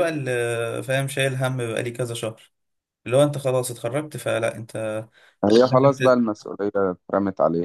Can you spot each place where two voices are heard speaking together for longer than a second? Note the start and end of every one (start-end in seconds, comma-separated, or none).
none